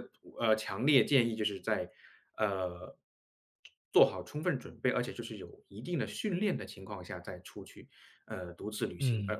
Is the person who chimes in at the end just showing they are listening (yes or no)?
yes